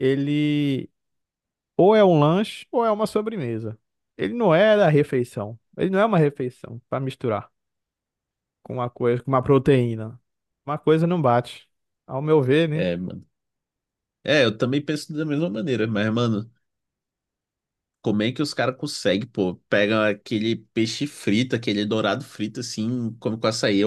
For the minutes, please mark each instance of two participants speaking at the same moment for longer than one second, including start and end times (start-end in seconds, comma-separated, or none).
none